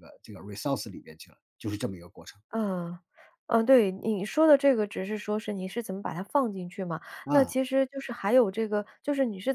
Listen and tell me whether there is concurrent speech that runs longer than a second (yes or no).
no